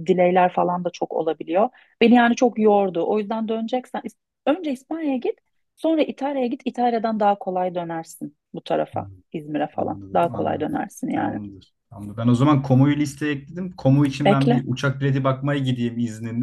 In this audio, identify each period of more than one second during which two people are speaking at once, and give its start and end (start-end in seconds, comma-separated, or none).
9.7-11.4